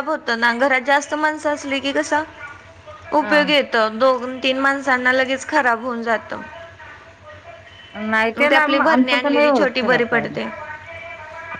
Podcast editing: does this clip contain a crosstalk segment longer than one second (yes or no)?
yes